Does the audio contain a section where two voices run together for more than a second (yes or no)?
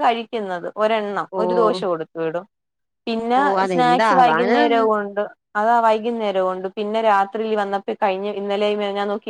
yes